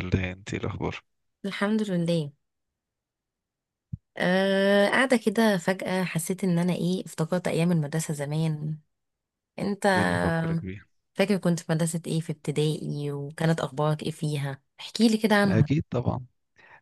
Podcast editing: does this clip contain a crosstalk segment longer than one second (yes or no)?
no